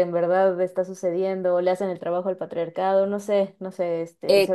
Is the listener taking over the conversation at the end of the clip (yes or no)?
yes